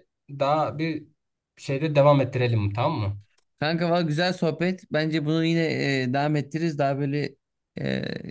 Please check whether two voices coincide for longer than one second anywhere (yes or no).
no